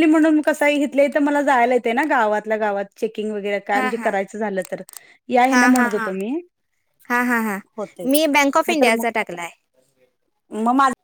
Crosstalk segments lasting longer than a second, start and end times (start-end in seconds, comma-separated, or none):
none